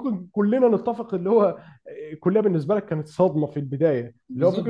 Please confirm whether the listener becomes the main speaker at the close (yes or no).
no